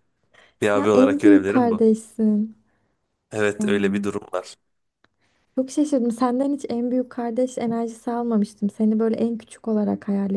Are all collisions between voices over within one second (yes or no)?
no